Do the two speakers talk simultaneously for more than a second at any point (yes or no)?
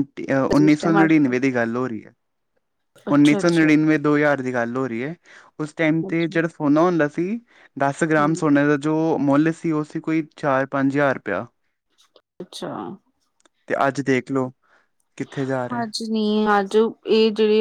no